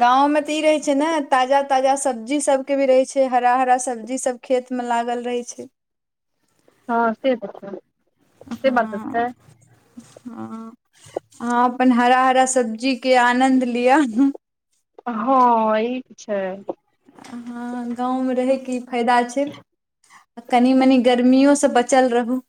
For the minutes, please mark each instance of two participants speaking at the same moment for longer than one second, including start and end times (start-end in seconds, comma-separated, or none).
none